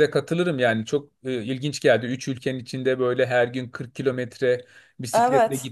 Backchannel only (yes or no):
yes